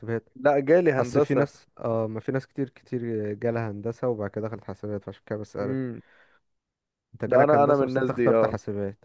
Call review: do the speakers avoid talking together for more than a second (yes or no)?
no